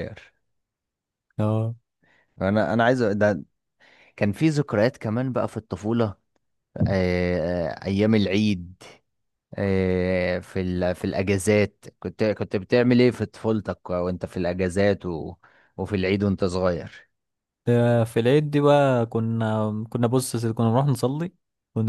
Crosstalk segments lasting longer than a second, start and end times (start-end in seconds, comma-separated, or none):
none